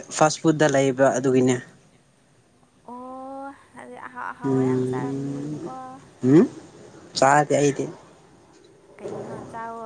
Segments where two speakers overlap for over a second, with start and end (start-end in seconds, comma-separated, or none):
4.4-5.7